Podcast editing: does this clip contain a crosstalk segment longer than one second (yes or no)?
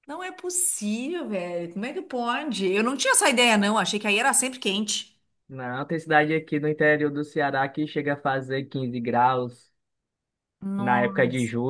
no